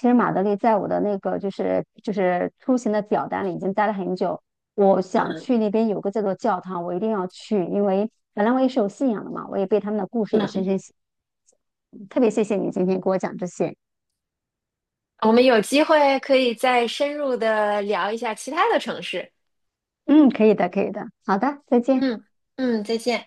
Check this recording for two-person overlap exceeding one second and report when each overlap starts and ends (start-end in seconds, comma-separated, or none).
none